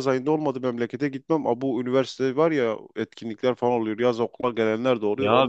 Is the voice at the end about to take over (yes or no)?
yes